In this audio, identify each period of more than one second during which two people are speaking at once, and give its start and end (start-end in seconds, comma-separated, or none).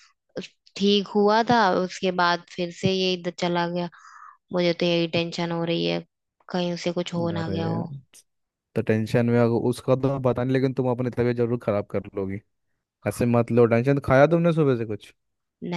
none